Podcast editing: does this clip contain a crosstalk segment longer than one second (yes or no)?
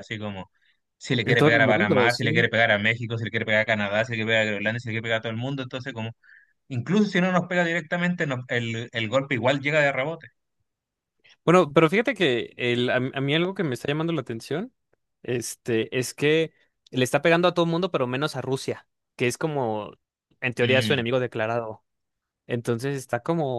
yes